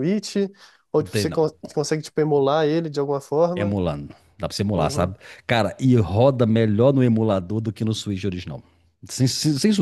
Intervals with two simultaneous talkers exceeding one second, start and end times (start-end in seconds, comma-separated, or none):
none